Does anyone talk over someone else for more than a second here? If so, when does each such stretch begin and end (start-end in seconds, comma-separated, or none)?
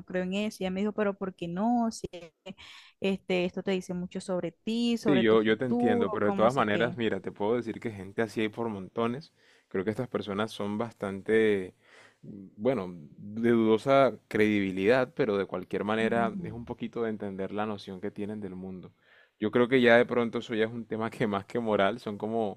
5.0-7.0